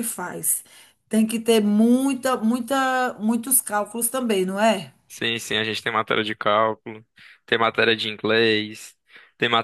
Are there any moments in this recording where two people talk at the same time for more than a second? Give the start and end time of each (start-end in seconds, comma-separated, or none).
none